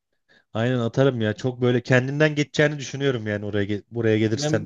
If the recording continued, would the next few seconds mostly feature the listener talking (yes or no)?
yes